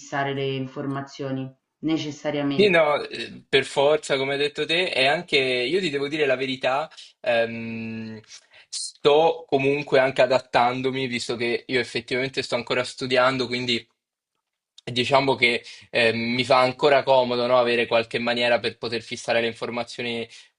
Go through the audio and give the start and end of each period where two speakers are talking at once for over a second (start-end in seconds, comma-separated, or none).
none